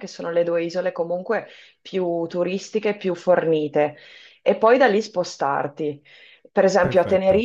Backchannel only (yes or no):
yes